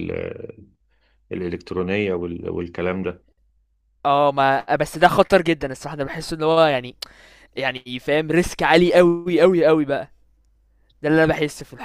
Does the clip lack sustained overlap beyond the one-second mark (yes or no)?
yes